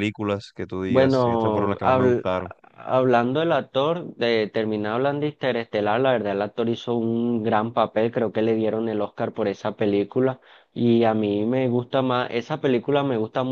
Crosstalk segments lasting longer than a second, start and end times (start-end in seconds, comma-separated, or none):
0.9-2.3